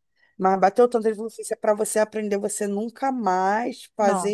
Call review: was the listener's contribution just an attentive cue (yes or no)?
yes